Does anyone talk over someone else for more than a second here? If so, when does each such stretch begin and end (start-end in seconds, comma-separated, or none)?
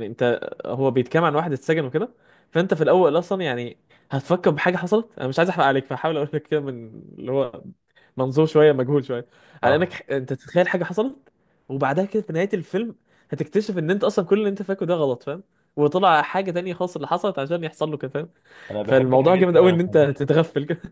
18.8-20.1